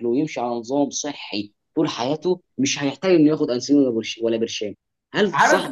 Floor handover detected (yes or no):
yes